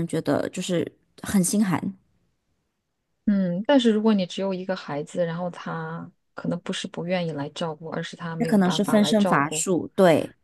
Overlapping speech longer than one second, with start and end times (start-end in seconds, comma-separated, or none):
8.4-9.7